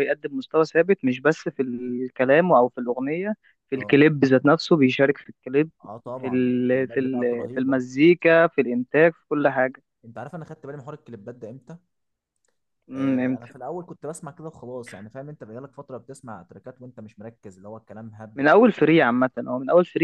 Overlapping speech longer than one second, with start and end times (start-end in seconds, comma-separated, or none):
6.2-7.8